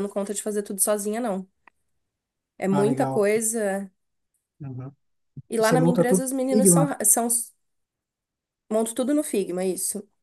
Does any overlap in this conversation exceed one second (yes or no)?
yes